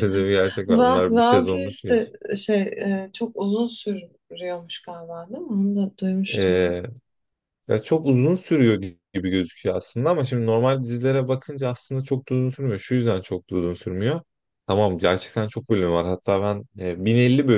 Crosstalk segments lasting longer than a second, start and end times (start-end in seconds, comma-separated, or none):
0.7-2.0